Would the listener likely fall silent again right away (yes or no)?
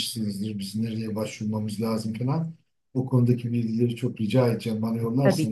yes